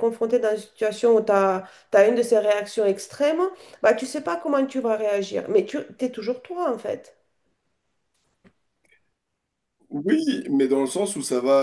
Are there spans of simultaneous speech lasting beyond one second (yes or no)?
no